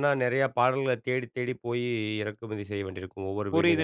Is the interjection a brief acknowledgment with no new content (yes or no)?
no